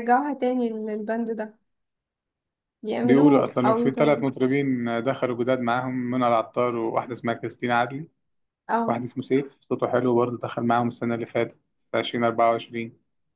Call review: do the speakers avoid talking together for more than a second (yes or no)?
no